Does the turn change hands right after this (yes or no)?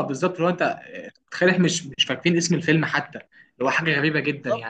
no